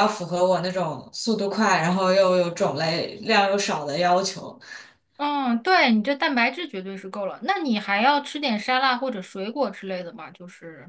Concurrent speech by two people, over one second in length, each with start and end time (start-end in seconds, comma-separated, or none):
none